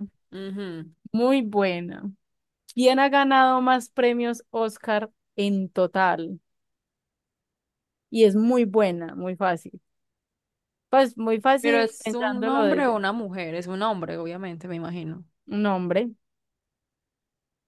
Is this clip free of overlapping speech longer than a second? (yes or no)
no